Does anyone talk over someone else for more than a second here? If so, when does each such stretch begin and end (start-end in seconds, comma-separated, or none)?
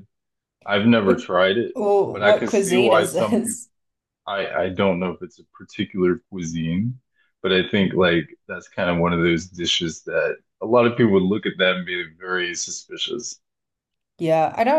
2.1-3.4